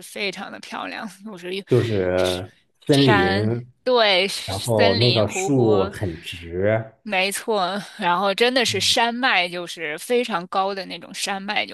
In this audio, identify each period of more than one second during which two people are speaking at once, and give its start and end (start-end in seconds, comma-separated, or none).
4.5-5.9